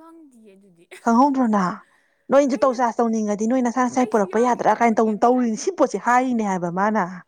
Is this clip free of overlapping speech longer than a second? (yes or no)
no